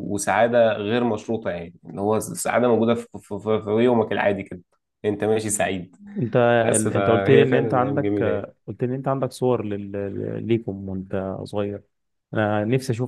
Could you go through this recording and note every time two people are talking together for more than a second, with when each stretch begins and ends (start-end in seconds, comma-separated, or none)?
7.0-8.2